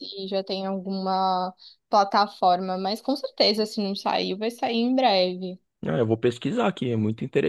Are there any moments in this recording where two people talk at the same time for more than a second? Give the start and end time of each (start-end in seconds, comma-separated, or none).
none